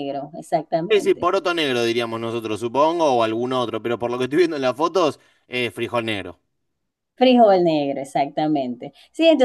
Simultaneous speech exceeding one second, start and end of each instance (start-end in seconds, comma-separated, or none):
none